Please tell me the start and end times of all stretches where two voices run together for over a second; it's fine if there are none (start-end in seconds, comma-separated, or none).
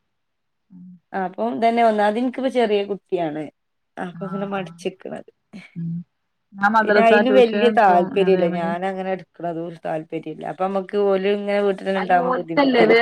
6.8-8.7